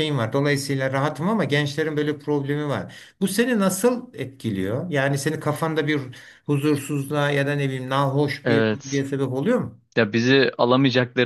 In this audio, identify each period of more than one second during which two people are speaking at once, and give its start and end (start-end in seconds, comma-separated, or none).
none